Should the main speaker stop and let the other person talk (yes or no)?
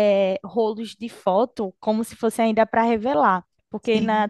no